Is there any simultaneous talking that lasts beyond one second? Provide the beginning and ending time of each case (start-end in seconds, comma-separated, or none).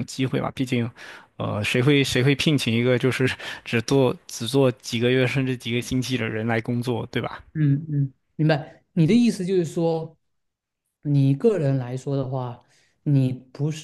none